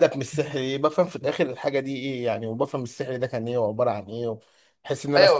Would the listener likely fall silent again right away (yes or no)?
no